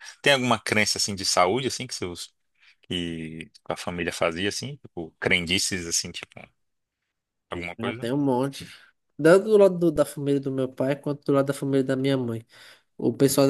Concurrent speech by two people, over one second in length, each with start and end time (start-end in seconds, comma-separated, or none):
none